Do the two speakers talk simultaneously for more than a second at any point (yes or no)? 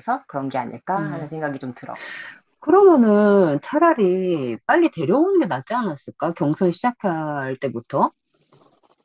no